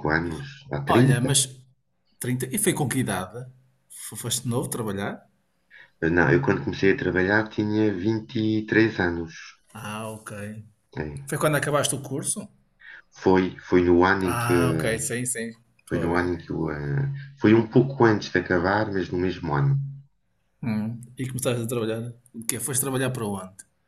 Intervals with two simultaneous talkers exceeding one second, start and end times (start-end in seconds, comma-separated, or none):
none